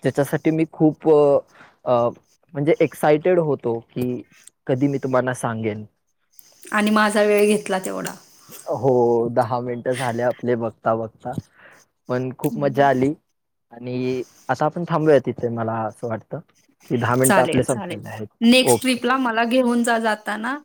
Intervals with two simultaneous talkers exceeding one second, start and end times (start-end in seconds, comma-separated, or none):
17.3-19.0